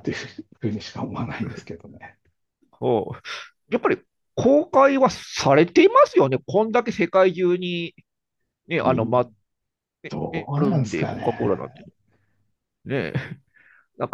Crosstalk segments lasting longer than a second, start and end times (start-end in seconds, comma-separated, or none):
10.1-11.6